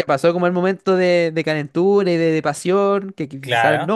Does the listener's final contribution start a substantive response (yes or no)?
no